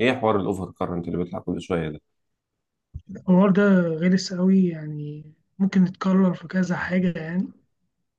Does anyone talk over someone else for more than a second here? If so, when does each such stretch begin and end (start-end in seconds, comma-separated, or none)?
none